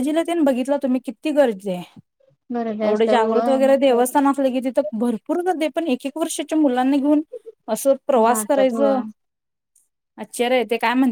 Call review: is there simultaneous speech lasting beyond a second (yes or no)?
yes